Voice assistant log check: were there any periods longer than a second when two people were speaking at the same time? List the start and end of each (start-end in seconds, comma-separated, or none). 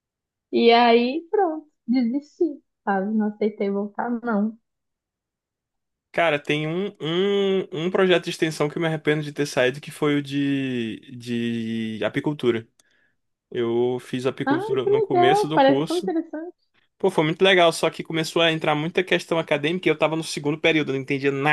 14.4-16.1